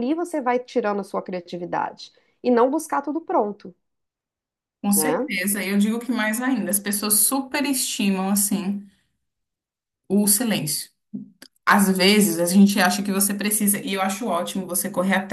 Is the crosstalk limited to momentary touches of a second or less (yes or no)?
yes